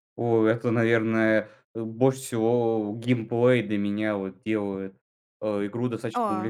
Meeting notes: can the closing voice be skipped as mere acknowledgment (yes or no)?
yes